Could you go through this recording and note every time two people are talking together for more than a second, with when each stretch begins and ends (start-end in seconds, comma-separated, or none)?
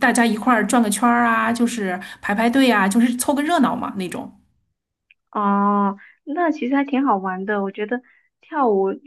none